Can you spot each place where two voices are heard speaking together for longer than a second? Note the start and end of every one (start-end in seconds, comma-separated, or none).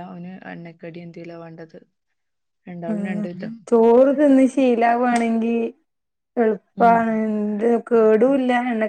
none